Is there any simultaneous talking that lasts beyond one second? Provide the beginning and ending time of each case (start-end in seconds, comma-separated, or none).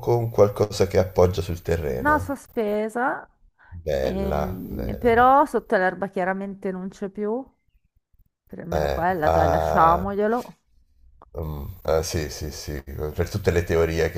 4.0-5.3, 8.7-10.0